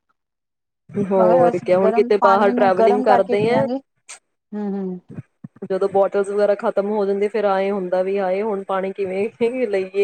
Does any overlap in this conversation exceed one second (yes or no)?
yes